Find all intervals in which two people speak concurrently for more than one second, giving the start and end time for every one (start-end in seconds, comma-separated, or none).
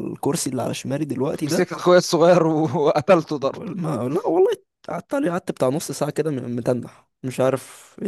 none